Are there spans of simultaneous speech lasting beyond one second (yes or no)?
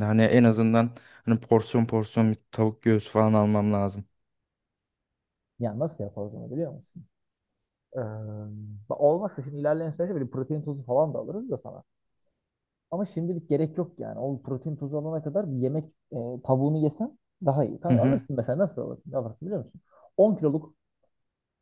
no